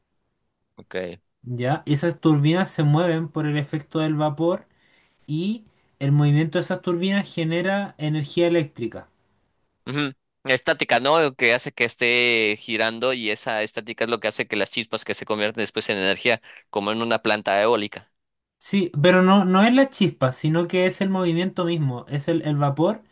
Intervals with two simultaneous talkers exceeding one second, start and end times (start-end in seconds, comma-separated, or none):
none